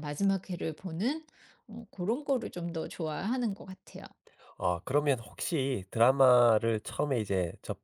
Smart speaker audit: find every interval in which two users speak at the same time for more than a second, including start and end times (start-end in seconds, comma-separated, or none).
none